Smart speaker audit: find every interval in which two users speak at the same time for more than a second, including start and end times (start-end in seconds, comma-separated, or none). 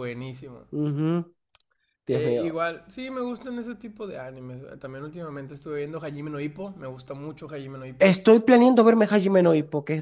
none